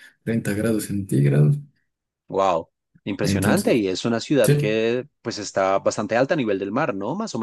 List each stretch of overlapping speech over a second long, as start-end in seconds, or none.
none